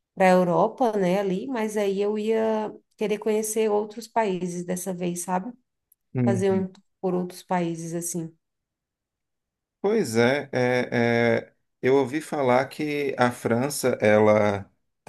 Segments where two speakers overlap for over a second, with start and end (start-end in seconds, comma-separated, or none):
none